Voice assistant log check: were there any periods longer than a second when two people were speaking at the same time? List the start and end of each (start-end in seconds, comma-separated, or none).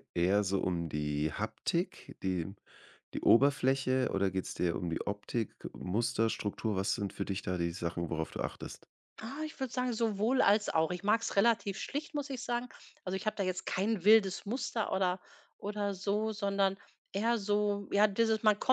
none